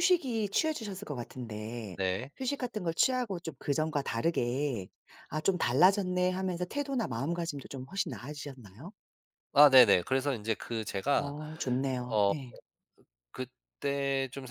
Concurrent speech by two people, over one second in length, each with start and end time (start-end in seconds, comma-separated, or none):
none